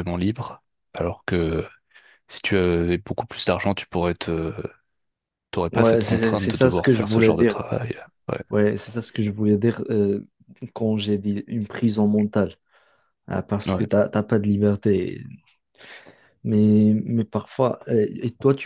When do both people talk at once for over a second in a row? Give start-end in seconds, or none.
5.7-7.6